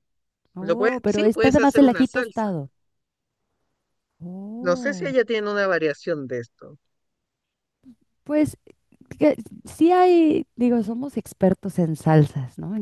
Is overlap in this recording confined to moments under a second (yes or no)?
no